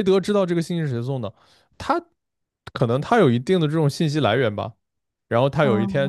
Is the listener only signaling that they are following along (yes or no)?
yes